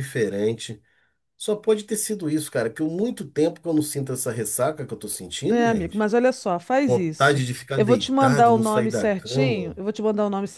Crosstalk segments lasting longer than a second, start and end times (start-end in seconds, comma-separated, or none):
6.9-9.8